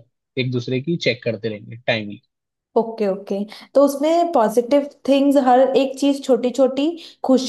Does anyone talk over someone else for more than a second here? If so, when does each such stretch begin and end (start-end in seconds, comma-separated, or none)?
none